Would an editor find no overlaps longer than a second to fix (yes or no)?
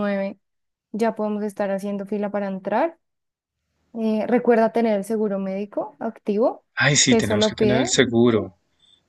no